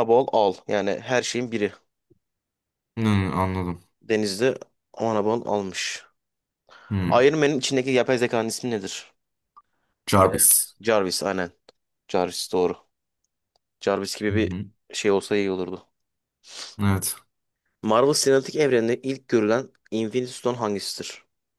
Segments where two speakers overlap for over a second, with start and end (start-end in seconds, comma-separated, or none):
none